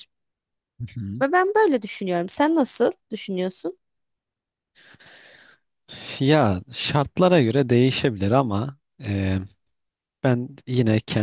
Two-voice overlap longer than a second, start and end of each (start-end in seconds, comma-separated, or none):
none